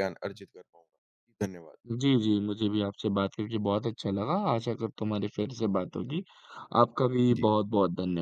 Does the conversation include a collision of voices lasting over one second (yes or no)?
no